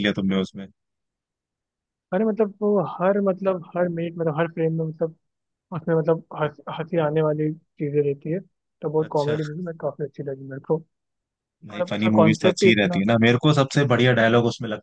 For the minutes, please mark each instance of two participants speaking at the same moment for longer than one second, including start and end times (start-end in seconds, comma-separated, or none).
11.7-13.0